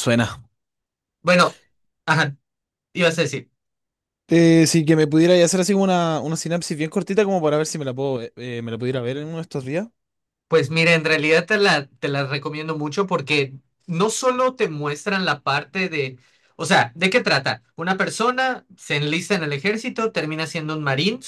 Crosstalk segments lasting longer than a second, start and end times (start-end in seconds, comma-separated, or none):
none